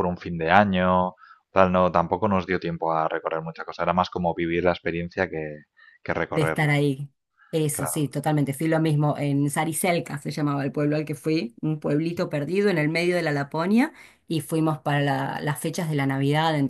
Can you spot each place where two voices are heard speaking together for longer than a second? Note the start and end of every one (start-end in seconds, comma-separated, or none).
none